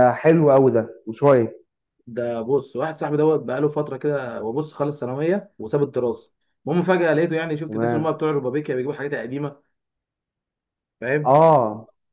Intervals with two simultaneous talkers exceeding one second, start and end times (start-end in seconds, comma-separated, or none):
none